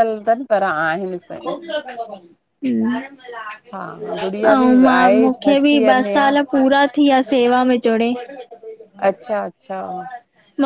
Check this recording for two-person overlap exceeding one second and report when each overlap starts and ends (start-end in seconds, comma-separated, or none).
4.5-6.3